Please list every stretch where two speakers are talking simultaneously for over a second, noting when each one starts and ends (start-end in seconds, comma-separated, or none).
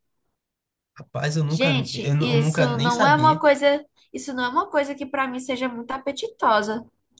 1.5-3.4